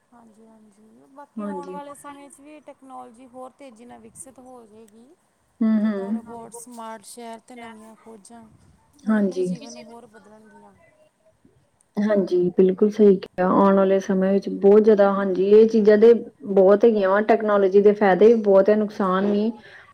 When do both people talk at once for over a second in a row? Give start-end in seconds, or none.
none